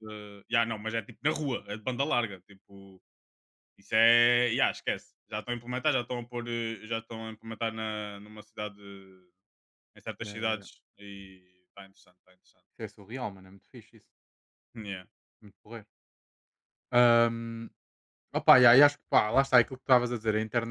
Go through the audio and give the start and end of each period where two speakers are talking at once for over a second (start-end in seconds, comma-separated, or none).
none